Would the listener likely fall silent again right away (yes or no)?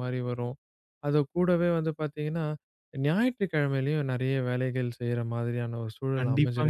no